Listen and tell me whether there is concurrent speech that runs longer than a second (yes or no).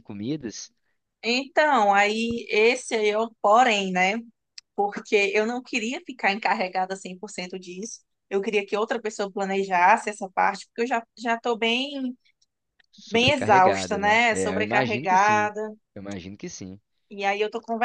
yes